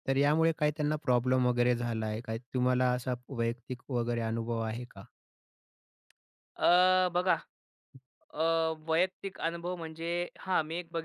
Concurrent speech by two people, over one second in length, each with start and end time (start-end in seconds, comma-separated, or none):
none